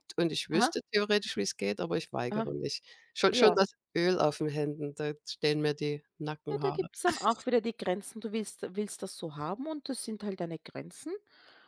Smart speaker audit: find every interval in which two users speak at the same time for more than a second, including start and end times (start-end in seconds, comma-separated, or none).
none